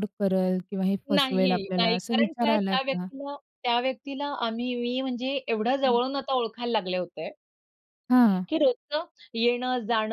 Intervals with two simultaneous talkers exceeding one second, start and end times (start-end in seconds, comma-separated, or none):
1.2-3.1